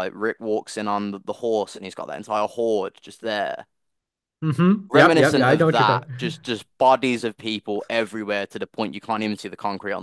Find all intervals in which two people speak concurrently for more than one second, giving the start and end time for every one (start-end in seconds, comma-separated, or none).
4.9-6.3